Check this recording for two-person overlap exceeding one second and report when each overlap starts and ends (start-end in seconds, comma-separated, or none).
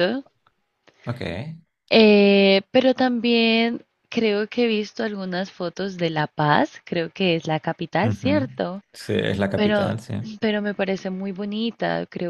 none